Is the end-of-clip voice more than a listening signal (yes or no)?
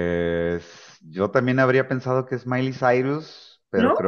no